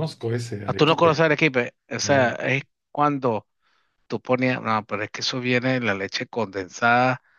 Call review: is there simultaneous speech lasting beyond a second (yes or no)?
no